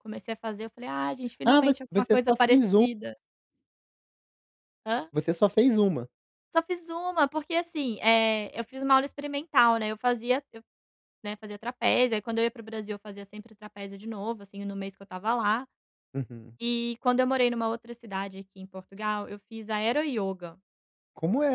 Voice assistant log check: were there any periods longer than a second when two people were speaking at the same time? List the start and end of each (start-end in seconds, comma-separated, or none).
1.4-2.9